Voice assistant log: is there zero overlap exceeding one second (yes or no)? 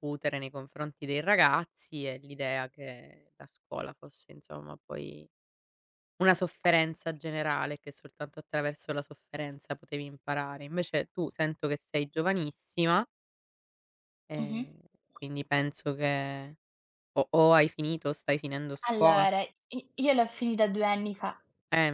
yes